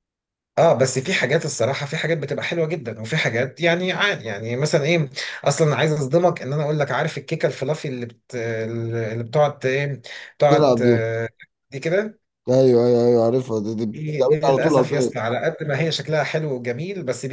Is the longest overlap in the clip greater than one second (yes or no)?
yes